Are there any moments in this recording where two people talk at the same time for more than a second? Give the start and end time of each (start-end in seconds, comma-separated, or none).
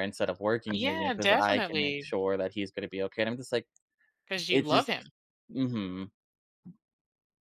0.7-2.1